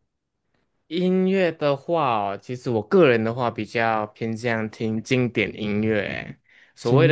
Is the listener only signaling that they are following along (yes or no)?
yes